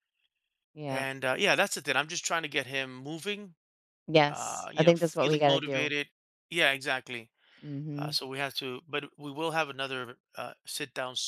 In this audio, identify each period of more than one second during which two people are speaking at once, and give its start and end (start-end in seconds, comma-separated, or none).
4.3-5.9